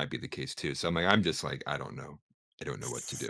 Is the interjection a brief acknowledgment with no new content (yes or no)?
no